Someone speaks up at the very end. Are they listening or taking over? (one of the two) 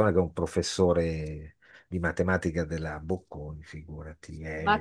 taking over